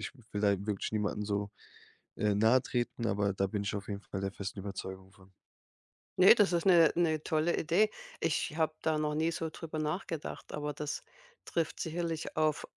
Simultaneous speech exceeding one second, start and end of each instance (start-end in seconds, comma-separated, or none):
none